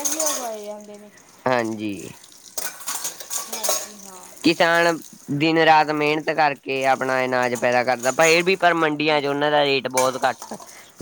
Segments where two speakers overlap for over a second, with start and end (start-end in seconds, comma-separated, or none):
none